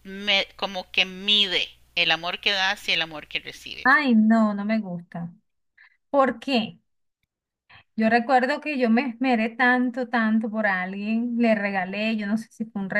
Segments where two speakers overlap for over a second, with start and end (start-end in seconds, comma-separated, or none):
none